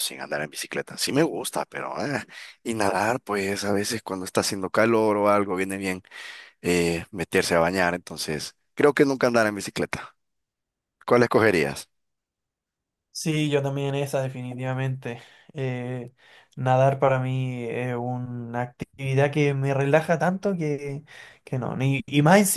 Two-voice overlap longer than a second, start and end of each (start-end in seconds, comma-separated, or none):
none